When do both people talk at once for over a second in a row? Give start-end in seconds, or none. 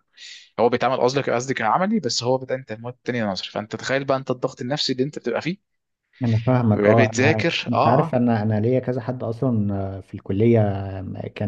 6.7-8.2